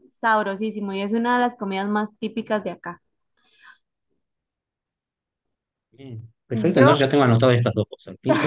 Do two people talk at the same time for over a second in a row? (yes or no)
no